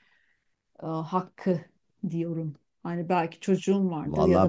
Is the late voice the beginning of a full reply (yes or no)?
yes